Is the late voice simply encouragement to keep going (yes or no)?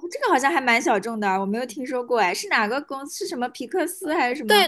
no